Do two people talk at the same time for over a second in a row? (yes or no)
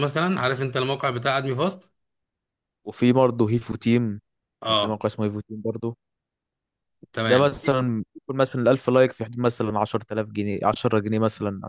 no